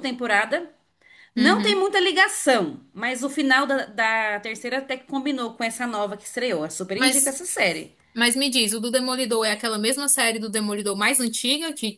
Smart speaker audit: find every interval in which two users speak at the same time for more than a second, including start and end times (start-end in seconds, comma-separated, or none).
none